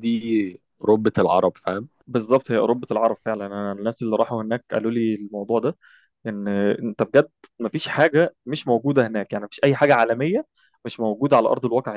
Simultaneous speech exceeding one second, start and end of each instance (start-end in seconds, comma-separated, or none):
none